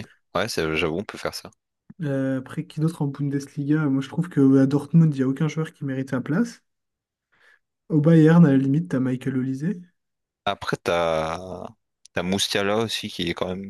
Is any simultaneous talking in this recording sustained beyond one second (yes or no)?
no